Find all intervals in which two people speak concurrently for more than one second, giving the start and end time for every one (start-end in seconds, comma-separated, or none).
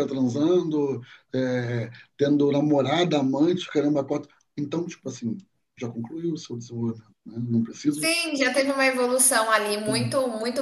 none